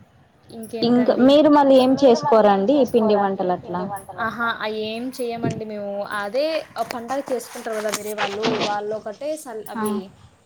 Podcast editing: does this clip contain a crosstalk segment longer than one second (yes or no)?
yes